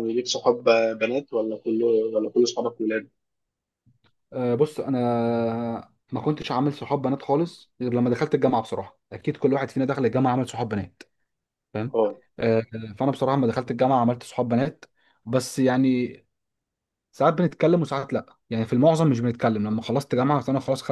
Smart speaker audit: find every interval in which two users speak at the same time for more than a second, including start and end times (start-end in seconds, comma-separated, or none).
none